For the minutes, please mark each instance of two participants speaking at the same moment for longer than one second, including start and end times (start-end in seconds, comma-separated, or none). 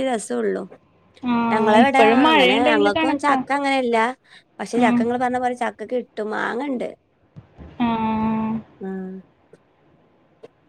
1.5-3.4